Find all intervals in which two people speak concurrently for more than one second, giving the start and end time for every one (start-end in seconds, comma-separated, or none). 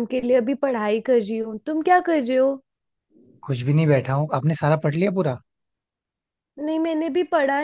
none